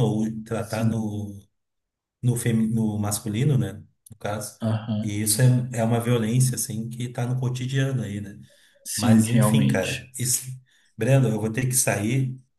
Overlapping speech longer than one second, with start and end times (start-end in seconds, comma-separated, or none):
8.9-10.2